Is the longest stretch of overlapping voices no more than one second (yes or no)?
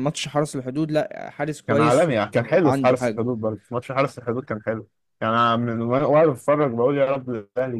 no